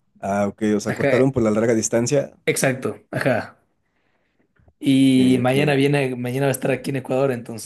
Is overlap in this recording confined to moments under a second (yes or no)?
yes